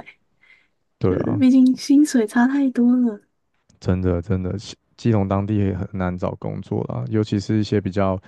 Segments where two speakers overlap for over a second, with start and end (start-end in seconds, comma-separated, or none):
none